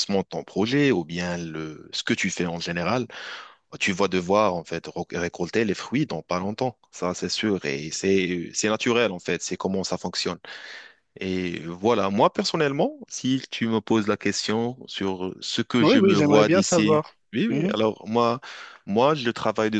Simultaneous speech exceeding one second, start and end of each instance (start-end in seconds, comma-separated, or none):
15.8-17.8